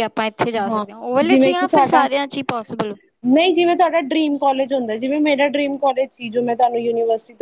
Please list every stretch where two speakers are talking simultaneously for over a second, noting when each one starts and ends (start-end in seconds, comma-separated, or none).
none